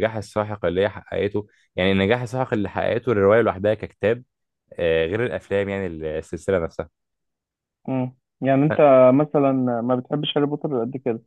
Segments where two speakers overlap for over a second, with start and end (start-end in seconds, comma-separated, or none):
none